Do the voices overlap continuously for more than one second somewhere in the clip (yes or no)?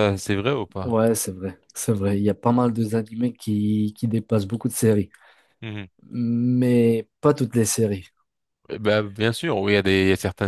no